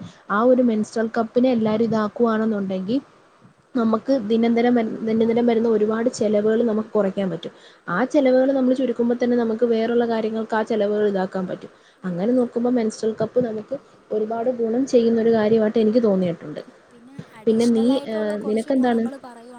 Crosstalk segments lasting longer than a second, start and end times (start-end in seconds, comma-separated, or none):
none